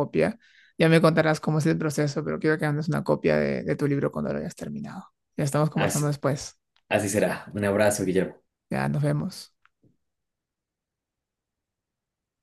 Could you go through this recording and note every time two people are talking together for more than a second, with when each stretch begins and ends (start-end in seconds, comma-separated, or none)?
none